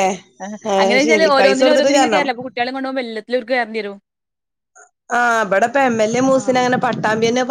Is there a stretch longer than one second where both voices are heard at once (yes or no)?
yes